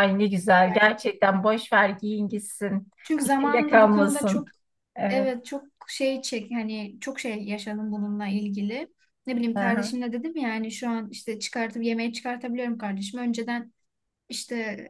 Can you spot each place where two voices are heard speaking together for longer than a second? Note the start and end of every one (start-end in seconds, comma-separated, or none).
3.2-4.5